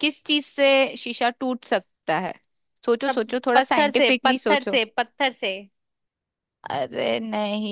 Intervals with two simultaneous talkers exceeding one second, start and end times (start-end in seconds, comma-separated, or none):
3.0-4.8